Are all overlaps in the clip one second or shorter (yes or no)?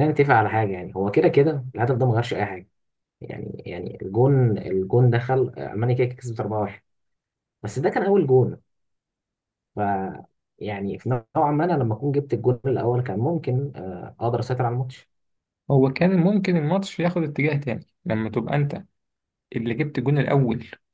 yes